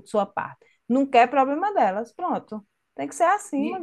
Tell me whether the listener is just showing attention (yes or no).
no